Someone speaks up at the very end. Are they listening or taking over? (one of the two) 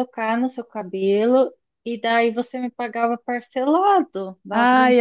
taking over